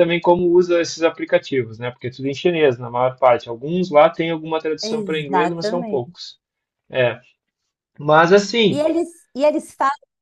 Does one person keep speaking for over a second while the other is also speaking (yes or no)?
yes